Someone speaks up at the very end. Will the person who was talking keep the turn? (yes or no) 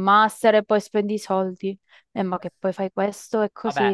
no